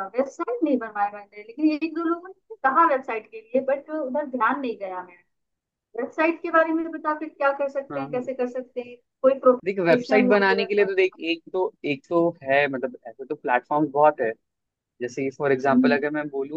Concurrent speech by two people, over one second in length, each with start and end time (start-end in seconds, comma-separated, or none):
9.7-11.2